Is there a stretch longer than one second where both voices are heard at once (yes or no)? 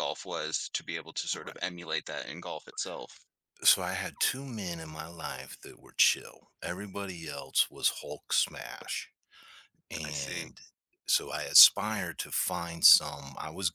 no